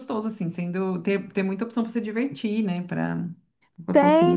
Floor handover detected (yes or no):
yes